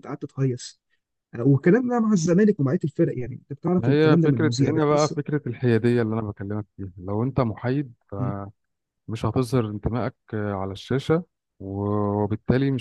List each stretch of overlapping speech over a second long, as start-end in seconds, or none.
3.8-5.2